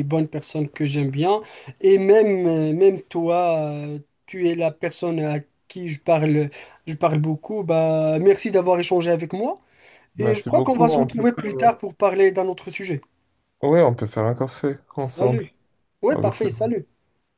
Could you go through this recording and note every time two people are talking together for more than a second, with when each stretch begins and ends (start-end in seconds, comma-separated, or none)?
10.2-11.7